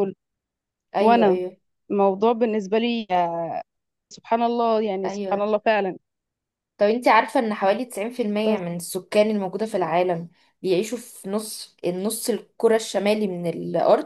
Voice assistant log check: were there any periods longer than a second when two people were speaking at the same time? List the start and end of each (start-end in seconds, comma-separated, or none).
none